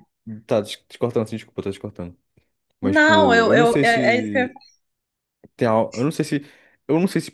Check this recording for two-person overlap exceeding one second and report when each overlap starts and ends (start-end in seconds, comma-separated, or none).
2.8-4.5